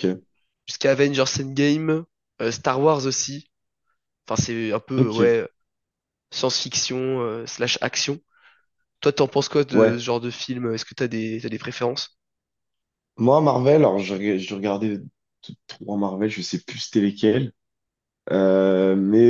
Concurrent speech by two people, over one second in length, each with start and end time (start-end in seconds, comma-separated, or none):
none